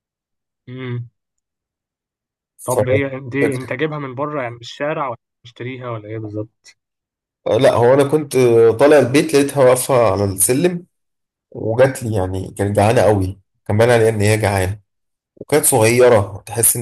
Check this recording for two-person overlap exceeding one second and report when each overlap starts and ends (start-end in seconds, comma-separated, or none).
none